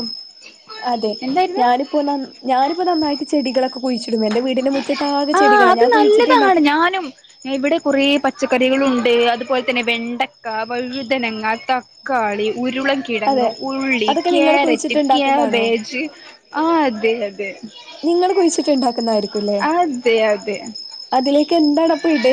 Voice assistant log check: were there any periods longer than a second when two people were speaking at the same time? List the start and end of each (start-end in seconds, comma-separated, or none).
14.1-15.7